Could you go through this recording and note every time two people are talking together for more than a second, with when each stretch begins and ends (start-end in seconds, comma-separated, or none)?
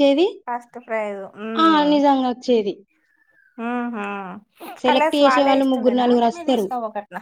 4.9-6.7